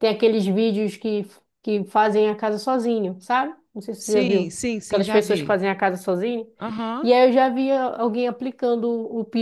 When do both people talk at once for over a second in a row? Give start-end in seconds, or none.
4.0-5.6